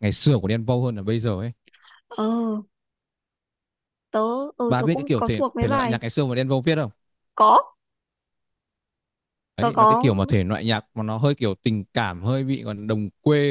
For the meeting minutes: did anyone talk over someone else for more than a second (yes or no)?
yes